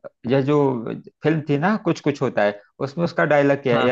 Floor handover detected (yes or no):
no